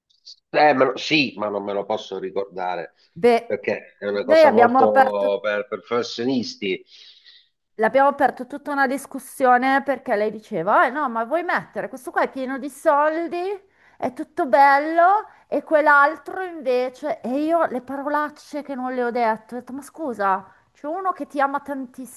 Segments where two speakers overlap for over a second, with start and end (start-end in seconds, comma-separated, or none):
4.2-5.4